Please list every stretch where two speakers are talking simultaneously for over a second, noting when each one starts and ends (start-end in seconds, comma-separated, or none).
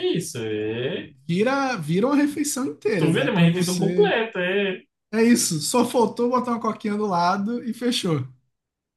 3.0-4.2